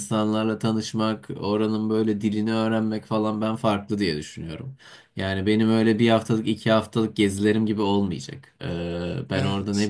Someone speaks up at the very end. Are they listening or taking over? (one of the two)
listening